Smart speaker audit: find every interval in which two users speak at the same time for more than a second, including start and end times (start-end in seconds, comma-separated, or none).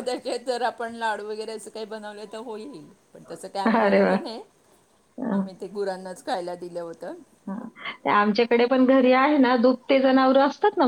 none